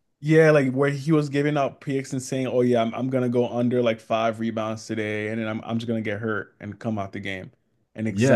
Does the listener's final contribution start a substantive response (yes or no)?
yes